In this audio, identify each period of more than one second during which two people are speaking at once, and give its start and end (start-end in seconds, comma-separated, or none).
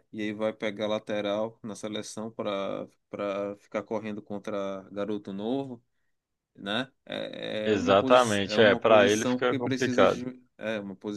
7.6-10.2